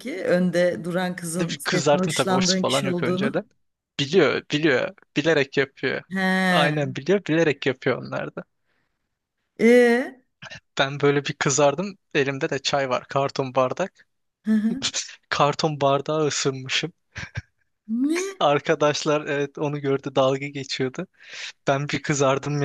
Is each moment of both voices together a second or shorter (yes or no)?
no